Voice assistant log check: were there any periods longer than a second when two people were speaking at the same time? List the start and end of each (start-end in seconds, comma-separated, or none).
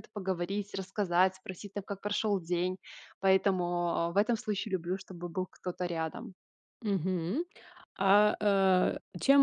none